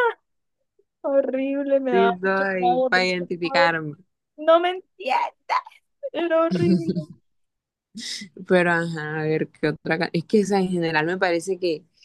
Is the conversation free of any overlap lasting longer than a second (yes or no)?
no